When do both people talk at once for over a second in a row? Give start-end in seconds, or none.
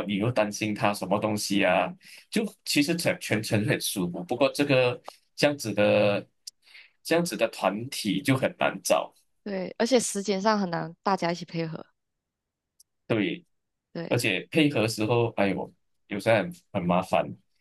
none